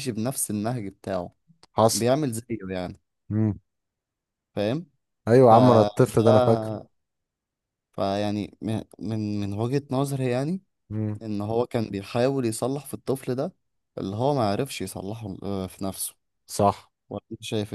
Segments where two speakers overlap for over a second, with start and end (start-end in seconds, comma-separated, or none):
5.4-6.7